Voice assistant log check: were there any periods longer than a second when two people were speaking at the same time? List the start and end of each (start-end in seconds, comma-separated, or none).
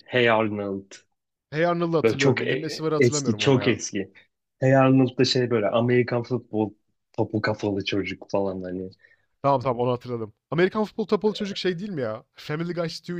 2.0-3.8